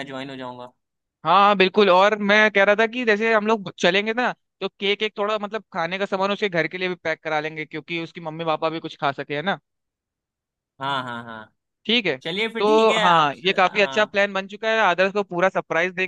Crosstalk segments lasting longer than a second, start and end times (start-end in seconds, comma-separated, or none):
12.6-14.2